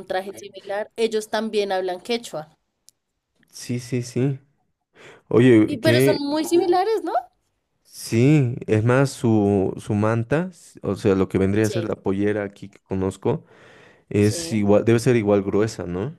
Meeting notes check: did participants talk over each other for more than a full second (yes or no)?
no